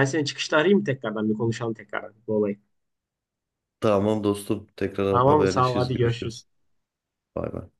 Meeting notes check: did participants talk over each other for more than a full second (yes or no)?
yes